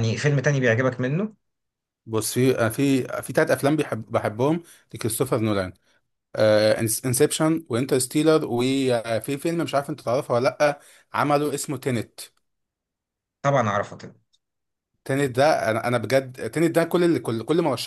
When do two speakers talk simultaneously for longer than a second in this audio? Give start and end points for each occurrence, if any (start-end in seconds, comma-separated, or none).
none